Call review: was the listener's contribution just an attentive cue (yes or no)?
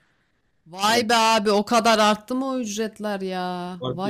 no